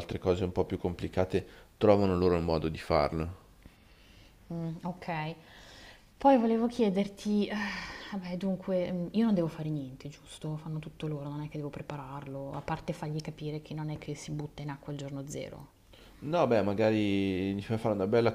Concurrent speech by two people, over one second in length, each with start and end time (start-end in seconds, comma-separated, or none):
none